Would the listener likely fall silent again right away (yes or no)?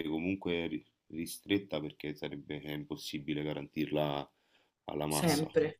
yes